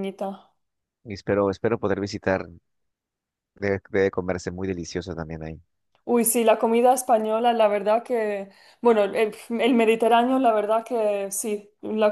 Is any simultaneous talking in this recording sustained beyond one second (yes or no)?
no